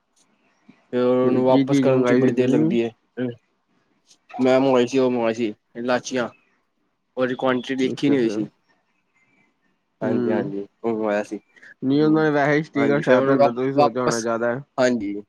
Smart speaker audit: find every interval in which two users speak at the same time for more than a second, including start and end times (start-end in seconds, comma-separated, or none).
1.5-2.7, 12.8-14.3